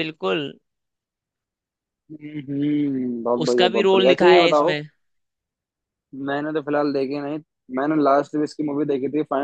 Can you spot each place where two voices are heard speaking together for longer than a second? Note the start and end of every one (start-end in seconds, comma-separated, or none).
3.4-4.8